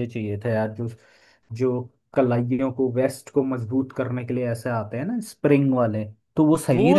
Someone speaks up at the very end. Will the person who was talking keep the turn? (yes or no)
no